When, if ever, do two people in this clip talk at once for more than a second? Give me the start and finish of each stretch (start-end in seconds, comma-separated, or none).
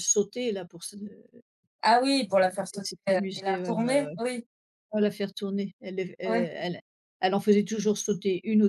2.5-4.2